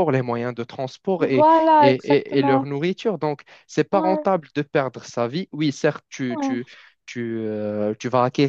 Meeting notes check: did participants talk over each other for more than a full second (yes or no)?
yes